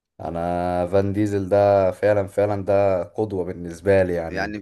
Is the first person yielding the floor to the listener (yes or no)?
yes